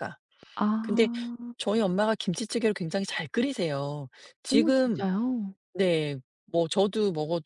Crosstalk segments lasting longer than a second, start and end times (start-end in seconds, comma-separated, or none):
none